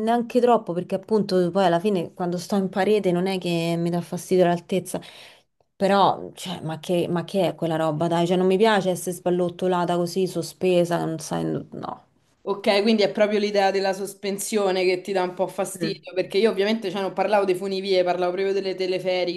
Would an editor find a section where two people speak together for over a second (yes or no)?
no